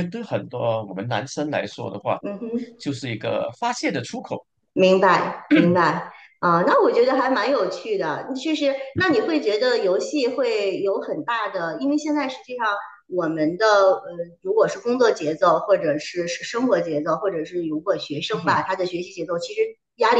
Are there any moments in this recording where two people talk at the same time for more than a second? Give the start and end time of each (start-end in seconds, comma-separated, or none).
none